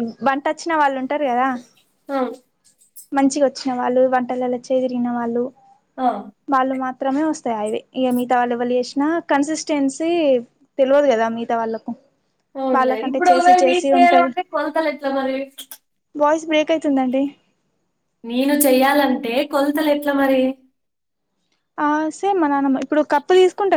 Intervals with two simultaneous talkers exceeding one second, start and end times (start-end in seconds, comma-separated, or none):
12.8-14.3